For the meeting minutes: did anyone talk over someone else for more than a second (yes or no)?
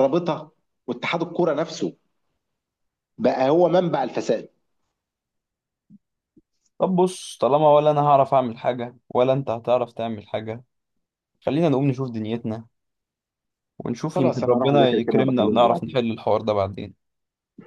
yes